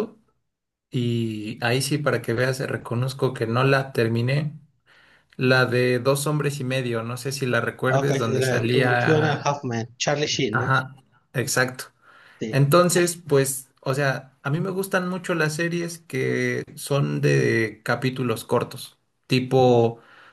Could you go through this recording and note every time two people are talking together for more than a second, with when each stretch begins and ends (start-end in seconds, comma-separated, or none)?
7.9-9.4